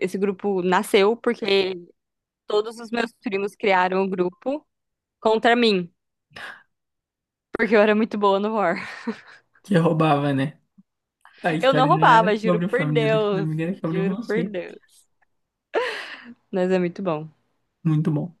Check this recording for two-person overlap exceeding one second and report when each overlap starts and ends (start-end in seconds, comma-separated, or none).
11.6-14.4